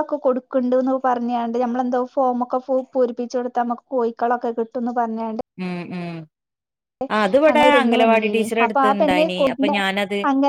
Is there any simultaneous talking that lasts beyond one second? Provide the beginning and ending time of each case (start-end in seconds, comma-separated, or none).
7.5-9.8